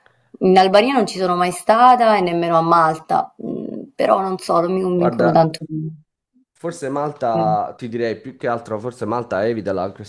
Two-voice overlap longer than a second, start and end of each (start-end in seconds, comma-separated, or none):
none